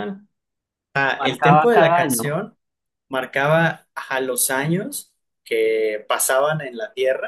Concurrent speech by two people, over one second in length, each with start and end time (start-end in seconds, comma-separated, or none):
1.2-2.4